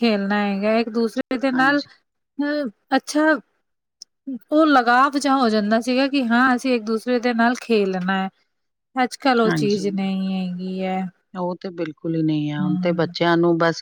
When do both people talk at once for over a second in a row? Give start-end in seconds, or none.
none